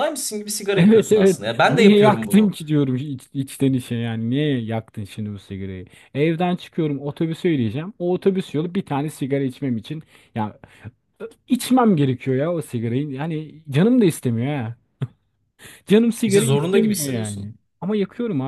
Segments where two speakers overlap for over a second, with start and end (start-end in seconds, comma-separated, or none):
0.8-2.5, 16.3-17.5